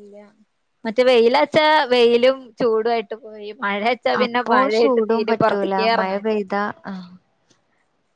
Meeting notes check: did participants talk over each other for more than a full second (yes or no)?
yes